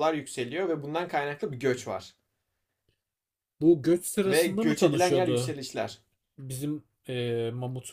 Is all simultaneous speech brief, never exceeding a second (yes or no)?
no